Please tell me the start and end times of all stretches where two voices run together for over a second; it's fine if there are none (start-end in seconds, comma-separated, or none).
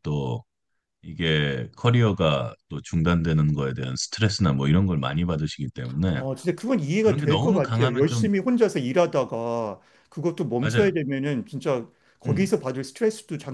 7.0-8.3